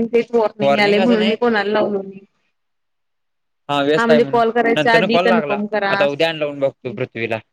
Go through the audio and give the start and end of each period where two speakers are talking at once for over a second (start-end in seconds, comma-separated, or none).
4.0-7.0